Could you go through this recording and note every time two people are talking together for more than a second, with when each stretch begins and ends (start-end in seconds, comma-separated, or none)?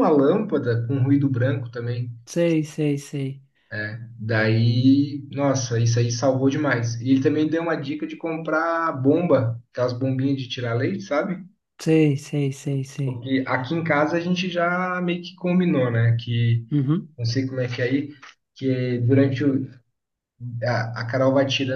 none